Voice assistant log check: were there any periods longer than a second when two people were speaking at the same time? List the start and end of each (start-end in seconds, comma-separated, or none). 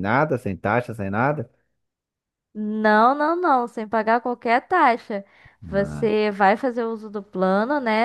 none